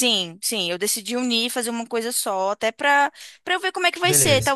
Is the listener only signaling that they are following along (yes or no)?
yes